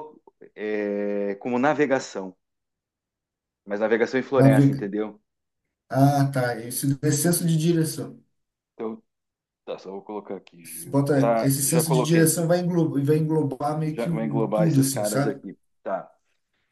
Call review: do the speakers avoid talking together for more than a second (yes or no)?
no